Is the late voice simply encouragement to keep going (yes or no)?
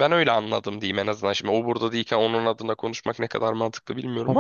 no